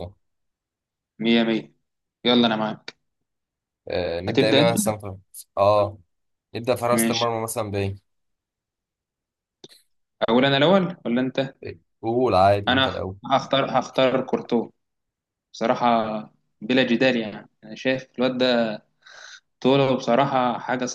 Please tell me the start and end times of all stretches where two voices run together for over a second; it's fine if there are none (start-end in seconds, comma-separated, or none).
none